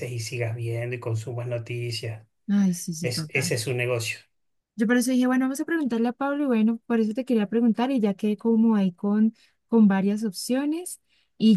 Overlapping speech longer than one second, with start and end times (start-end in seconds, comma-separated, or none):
none